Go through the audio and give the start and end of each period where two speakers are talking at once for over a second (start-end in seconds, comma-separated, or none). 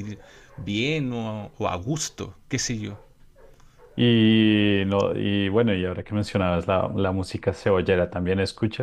none